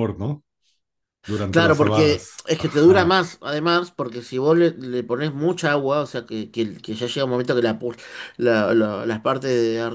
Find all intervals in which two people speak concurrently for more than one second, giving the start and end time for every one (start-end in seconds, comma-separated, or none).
1.5-3.2